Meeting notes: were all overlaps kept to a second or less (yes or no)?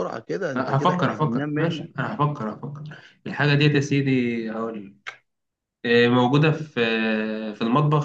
no